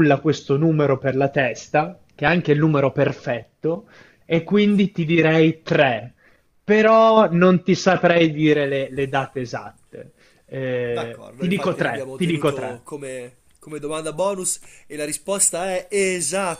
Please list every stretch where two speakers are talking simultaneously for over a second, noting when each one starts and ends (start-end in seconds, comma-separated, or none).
10.9-12.8